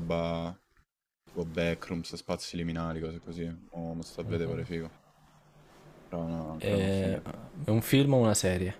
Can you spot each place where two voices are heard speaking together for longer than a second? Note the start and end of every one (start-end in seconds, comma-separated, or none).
none